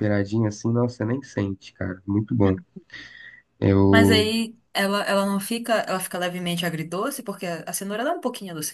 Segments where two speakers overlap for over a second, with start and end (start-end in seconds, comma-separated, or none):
none